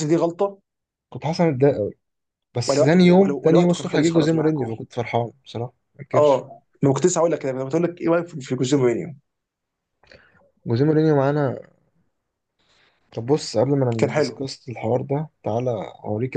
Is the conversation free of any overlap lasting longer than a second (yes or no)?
no